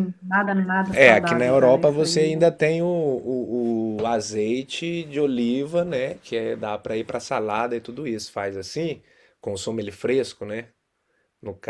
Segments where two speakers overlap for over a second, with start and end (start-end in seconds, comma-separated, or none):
0.9-2.1